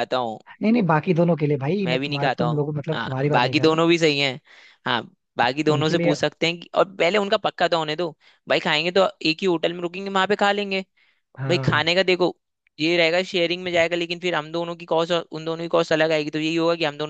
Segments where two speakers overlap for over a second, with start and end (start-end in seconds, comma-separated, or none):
1.8-3.8